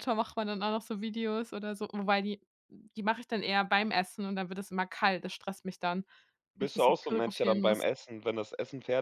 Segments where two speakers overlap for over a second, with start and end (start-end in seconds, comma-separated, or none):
6.6-7.8